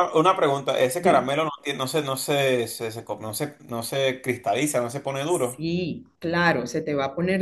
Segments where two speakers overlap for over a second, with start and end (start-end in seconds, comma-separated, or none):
none